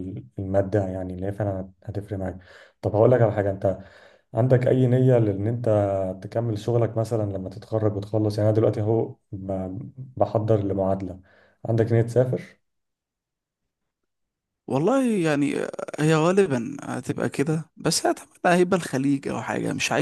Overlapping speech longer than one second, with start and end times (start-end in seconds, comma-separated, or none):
none